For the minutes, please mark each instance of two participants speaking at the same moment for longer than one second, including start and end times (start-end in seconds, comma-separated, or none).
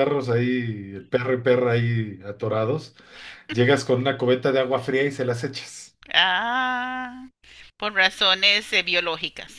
none